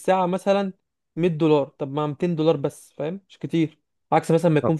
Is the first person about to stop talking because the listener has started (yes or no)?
no